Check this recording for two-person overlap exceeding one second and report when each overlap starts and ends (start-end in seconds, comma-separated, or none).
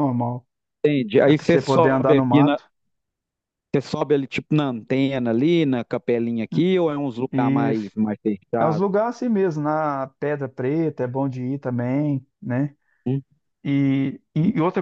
1.2-2.6